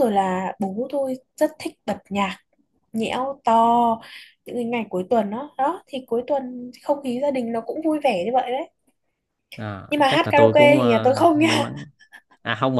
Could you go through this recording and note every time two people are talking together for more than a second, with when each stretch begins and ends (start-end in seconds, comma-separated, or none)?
9.9-11.6